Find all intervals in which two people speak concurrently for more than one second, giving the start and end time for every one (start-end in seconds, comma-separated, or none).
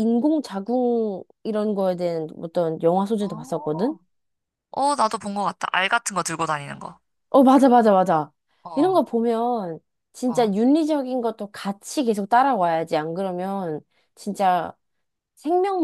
none